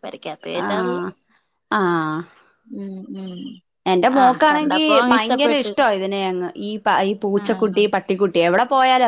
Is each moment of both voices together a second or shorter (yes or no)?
no